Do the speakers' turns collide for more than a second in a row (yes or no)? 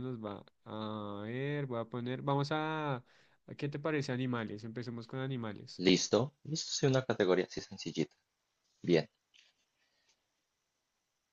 no